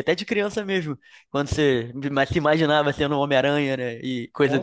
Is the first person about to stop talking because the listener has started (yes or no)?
yes